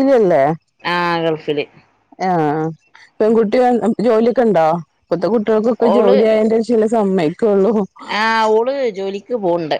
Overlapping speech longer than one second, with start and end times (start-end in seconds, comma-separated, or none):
none